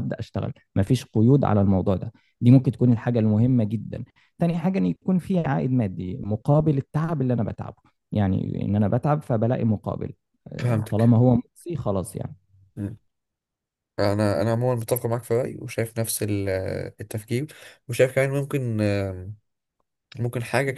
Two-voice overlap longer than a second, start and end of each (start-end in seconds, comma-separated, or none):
none